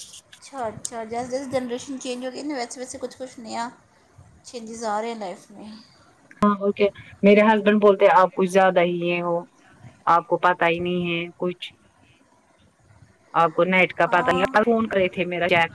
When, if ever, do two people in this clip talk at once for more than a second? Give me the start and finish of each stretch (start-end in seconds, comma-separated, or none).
none